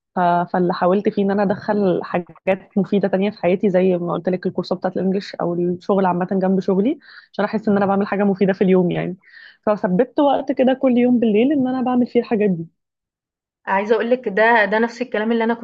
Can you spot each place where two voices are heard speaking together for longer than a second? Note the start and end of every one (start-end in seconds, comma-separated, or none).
none